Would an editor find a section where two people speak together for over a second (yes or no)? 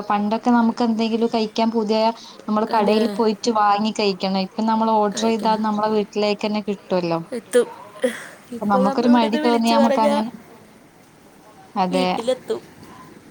yes